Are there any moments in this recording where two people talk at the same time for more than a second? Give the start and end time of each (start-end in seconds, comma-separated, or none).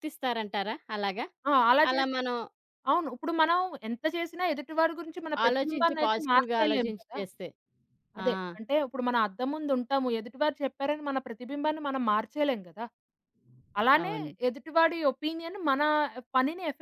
5.5-7.2